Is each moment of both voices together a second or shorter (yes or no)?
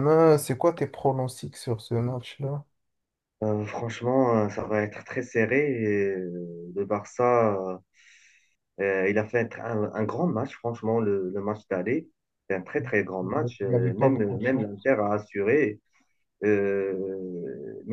no